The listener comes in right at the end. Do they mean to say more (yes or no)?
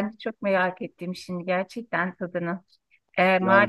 no